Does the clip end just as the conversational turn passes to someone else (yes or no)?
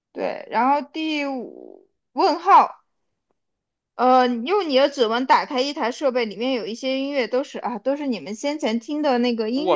yes